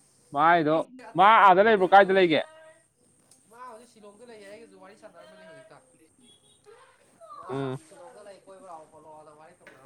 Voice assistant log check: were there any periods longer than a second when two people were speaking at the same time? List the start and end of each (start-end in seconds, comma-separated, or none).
0.6-2.4